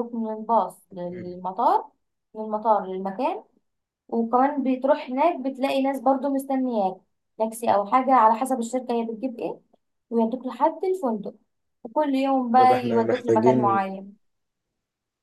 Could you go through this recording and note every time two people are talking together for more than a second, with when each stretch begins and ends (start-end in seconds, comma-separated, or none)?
12.6-13.8